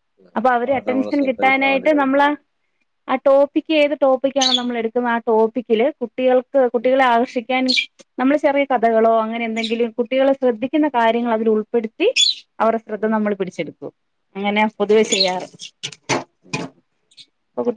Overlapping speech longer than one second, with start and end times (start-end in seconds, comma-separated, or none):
0.6-2.2